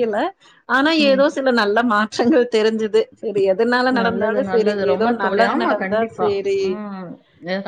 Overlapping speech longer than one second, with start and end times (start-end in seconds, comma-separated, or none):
4.0-6.3